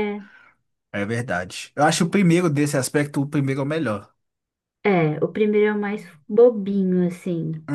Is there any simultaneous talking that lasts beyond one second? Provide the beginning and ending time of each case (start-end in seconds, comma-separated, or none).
none